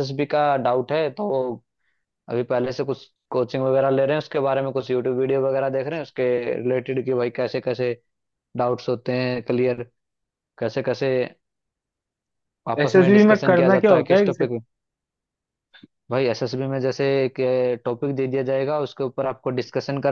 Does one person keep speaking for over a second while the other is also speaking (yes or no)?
yes